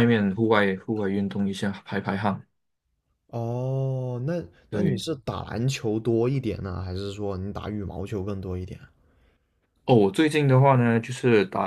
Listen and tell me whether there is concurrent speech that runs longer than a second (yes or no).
no